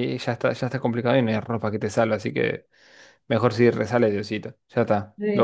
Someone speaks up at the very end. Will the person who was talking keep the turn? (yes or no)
no